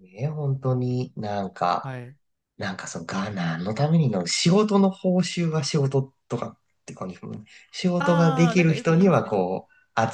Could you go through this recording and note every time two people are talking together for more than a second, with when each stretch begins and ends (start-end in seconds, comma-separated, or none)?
8.0-9.3